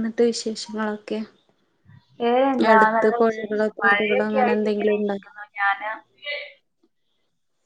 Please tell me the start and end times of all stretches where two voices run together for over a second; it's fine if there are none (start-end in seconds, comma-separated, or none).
2.7-5.2